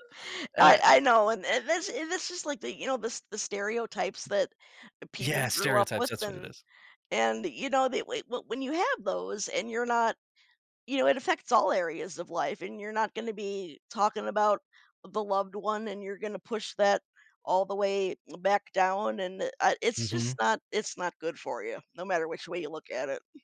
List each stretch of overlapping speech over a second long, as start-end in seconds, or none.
5.2-6.5